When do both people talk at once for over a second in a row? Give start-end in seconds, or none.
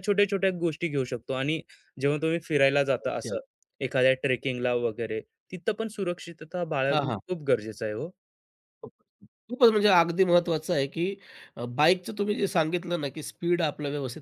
none